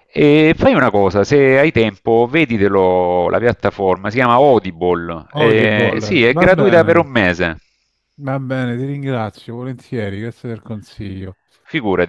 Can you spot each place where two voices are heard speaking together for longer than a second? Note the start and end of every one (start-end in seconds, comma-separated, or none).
5.4-7.1